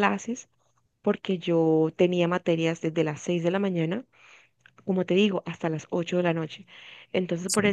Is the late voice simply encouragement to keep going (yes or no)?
yes